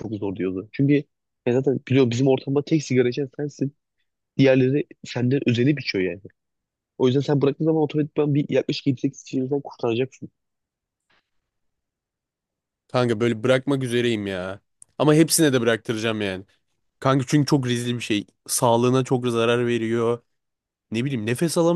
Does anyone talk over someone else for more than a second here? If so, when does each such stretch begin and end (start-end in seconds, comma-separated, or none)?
none